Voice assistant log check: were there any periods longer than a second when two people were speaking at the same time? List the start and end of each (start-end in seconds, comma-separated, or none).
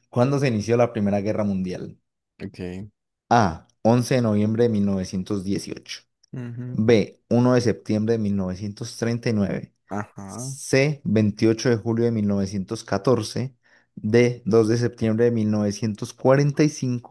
none